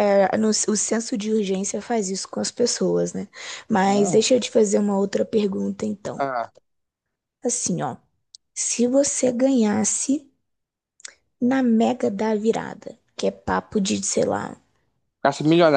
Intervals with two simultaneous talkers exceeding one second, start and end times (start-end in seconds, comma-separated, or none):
none